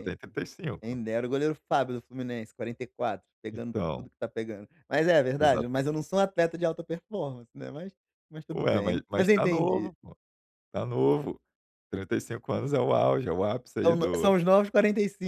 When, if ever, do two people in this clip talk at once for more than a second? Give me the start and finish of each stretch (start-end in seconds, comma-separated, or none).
8.5-9.9